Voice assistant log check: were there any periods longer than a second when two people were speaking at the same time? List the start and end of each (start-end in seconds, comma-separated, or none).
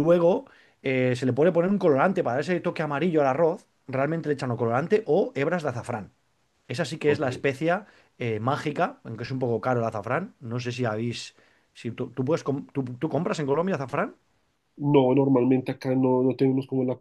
none